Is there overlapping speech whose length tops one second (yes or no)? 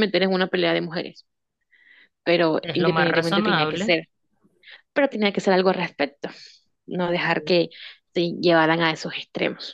yes